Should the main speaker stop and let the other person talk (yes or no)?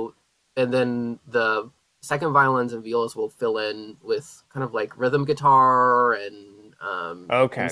yes